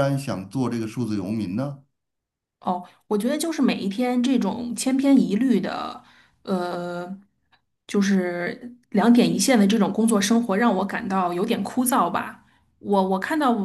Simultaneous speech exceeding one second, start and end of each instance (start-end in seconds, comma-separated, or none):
none